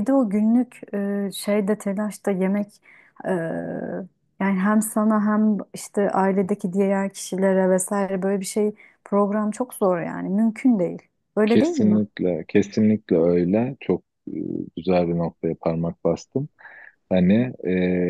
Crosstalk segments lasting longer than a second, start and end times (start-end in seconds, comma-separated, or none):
none